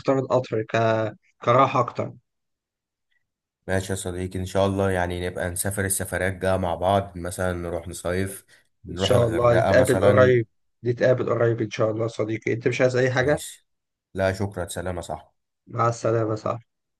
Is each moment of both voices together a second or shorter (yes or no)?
no